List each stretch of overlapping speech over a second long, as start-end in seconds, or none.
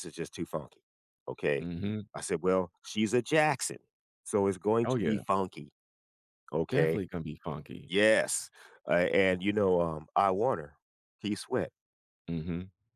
none